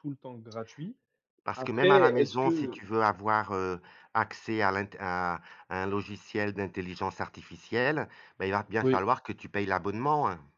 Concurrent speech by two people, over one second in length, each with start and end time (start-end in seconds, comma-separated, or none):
1.6-2.8